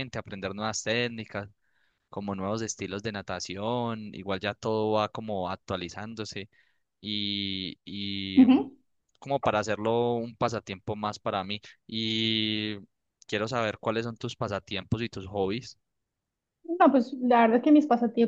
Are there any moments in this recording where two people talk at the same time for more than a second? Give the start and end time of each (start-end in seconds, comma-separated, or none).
none